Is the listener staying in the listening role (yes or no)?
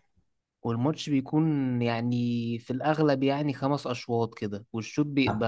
no